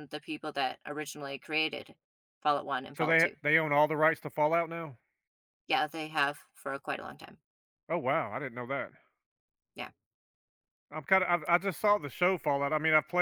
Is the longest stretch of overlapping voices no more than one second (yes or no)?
yes